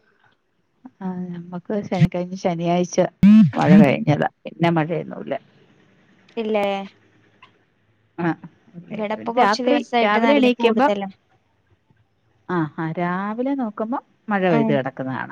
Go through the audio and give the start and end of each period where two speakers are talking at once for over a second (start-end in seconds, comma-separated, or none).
8.9-10.9